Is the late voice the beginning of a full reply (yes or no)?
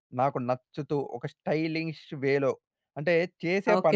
yes